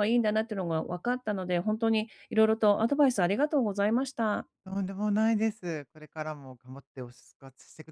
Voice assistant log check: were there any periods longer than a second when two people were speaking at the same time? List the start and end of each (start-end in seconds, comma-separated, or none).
none